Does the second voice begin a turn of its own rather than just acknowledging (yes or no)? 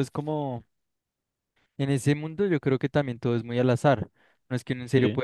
no